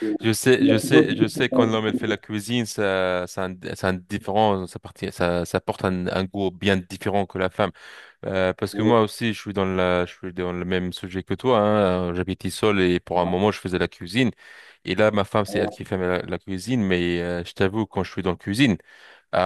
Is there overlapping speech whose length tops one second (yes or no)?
yes